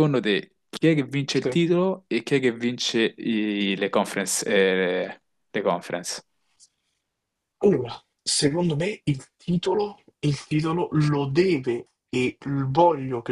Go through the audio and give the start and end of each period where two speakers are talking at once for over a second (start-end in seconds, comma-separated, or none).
none